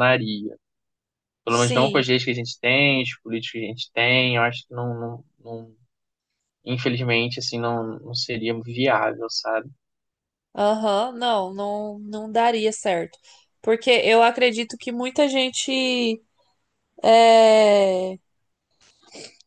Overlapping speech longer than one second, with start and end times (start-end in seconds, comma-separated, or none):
none